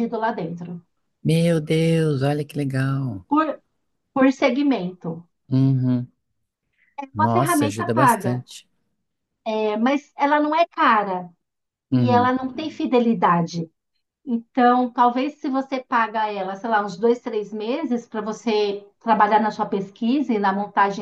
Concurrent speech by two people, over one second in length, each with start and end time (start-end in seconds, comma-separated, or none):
7.1-8.4